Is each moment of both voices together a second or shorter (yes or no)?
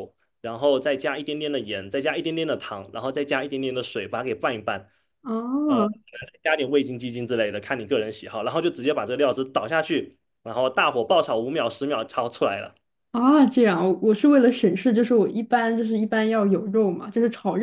yes